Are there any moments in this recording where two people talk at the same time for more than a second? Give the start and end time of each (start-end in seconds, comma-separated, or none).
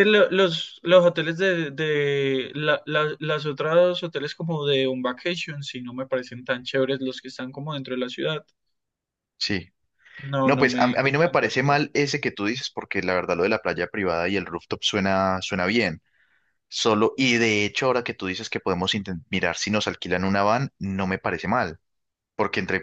10.4-11.8